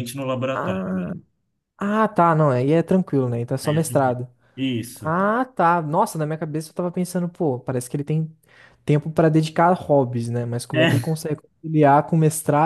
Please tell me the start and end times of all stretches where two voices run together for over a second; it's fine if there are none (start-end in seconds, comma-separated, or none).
none